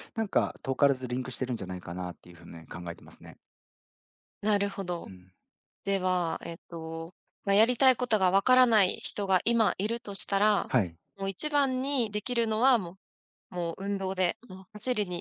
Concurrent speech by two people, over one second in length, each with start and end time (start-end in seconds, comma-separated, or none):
none